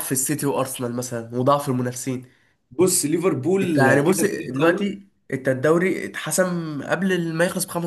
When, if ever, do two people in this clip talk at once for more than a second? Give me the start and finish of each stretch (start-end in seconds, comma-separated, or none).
3.6-4.9